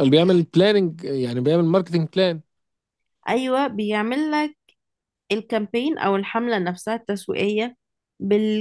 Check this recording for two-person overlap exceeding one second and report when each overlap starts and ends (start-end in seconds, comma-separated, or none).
none